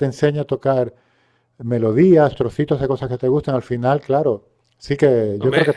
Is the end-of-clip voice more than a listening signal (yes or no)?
yes